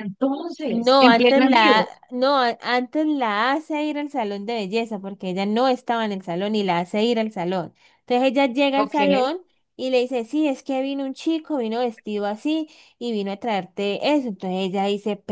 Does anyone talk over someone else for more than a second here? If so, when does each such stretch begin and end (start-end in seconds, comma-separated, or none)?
0.7-1.9